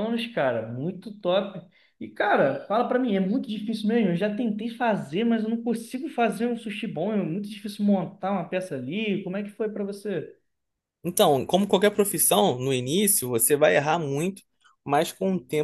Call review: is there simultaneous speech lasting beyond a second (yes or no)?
no